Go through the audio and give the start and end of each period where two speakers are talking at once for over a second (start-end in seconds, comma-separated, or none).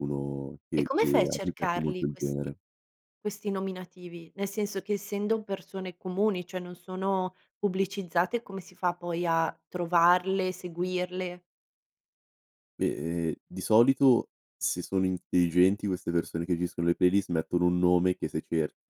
0.8-2.5